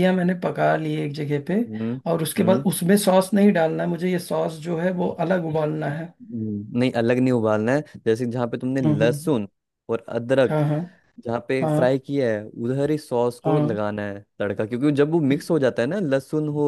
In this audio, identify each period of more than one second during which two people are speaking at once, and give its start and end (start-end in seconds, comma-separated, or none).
none